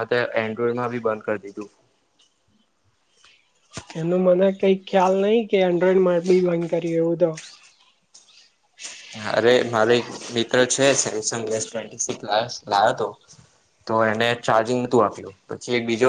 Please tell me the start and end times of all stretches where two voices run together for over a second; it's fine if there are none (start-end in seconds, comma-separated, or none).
none